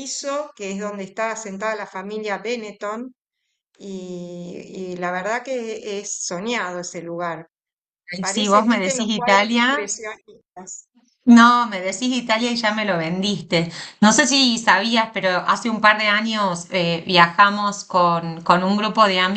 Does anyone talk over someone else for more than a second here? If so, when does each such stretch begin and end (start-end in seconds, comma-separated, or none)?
8.3-9.7